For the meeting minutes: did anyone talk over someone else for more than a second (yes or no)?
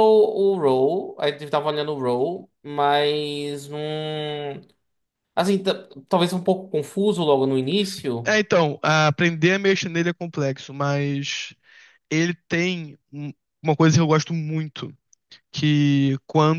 no